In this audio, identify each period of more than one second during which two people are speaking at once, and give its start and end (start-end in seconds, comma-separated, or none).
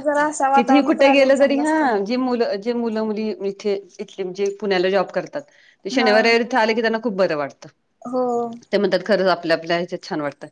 0.5-1.9